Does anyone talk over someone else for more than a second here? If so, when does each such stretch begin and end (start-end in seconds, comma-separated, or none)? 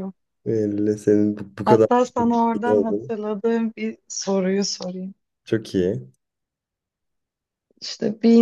1.6-3.1